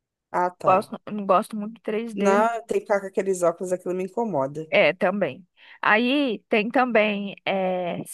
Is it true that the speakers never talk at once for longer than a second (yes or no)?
yes